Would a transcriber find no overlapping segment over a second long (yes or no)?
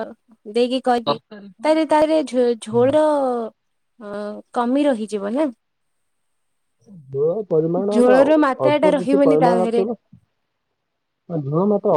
no